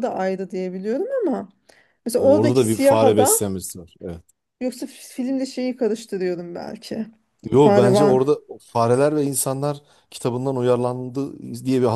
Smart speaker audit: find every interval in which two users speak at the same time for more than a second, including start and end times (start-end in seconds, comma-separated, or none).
2.2-3.4